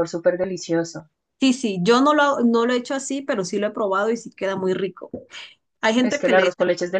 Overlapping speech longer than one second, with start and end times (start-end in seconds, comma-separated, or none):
none